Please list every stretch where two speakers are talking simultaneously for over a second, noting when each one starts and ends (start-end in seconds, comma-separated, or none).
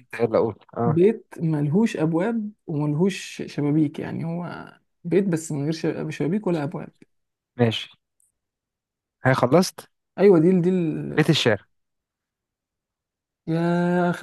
none